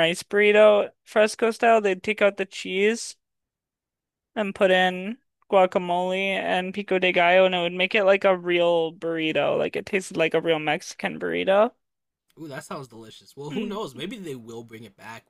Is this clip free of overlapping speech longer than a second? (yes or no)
yes